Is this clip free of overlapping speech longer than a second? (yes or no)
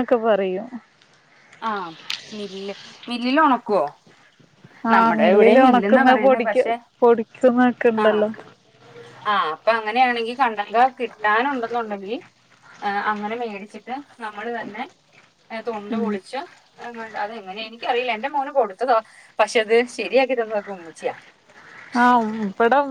no